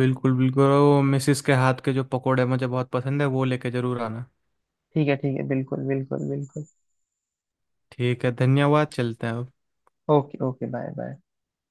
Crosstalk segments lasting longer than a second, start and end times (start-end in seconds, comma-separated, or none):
none